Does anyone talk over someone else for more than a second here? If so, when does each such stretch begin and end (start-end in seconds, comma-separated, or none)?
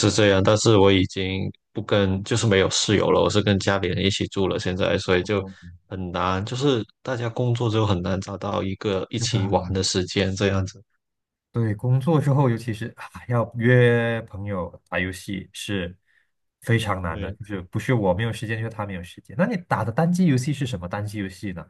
none